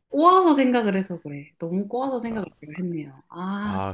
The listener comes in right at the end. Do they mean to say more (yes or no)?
yes